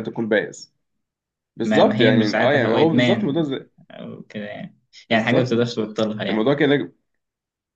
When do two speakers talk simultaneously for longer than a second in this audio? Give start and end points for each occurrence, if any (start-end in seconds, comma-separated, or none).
1.6-3.5